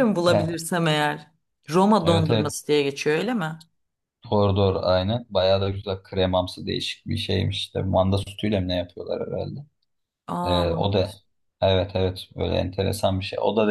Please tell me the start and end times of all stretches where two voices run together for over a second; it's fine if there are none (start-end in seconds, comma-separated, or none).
none